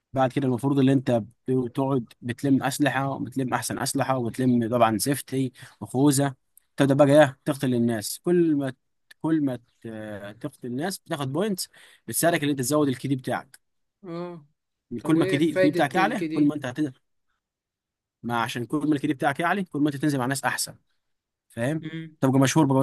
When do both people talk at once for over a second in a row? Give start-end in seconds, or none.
15.0-16.6